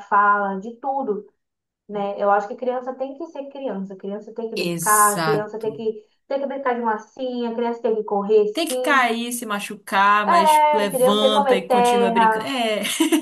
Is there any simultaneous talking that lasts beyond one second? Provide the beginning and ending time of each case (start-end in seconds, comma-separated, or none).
4.5-5.8, 10.3-12.6